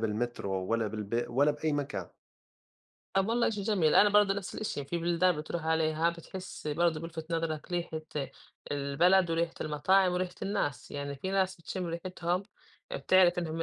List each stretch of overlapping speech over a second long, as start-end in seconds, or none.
none